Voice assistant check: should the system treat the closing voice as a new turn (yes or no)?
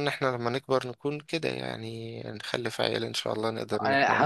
yes